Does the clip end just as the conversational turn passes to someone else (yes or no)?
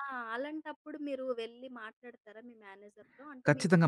yes